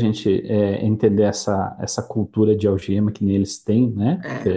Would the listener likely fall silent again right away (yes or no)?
yes